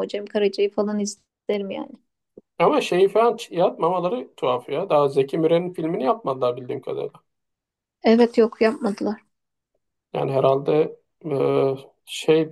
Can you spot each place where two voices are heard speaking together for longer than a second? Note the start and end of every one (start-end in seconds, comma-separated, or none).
none